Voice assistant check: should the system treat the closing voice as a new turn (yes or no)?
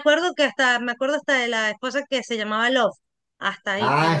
yes